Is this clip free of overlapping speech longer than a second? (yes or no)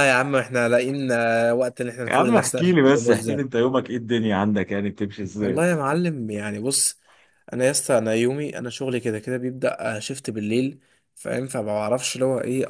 no